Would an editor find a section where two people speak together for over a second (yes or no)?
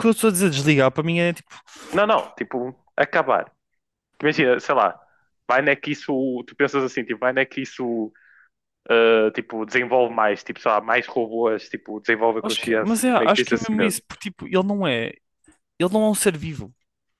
yes